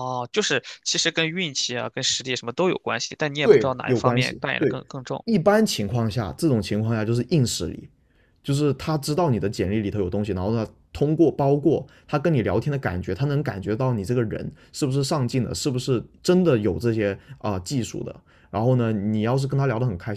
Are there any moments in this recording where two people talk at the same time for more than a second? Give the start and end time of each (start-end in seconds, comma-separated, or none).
3.4-4.8